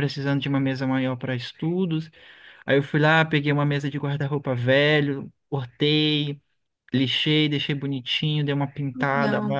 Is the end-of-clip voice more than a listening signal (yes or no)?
no